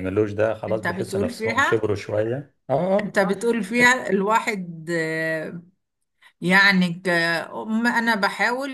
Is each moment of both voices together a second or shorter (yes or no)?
no